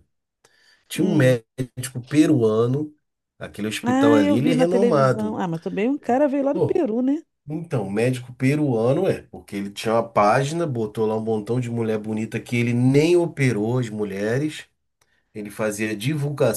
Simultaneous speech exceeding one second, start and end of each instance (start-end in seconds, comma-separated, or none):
3.8-5.4